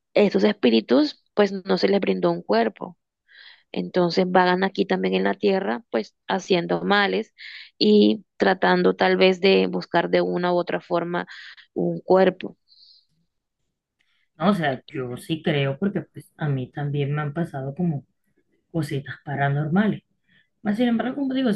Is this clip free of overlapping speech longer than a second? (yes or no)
yes